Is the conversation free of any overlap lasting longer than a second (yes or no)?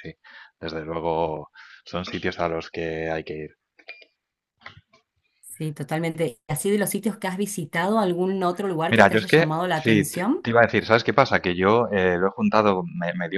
no